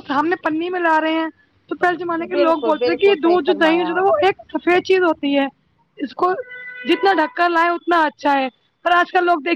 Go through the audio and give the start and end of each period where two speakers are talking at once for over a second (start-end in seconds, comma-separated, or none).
2.3-4.0